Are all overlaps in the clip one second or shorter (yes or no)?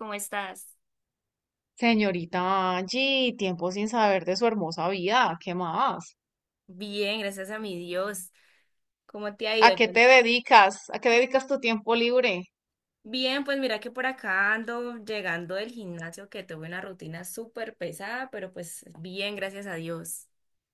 yes